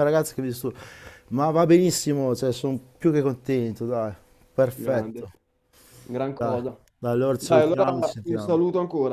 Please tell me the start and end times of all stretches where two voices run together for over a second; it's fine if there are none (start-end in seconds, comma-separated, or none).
7.3-8.6